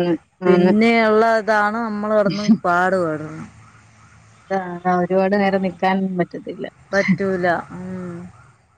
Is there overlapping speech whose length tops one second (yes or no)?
no